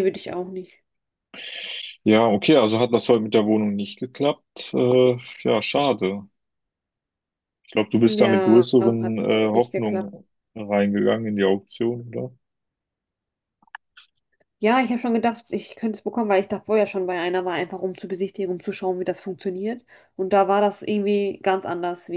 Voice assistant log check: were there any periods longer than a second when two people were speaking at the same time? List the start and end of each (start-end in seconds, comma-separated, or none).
8.2-10.1